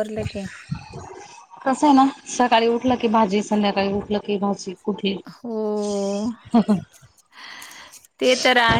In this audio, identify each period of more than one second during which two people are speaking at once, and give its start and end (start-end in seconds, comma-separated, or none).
none